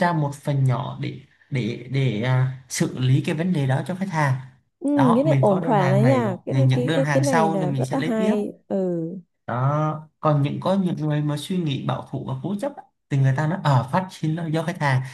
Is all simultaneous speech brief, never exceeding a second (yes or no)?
no